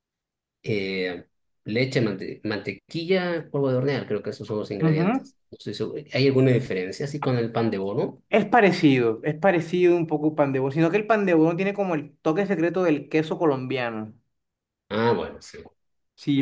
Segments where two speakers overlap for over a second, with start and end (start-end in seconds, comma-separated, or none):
none